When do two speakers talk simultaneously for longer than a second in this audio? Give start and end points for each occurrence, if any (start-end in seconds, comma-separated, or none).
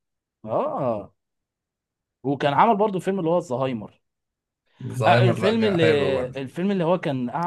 5.0-6.4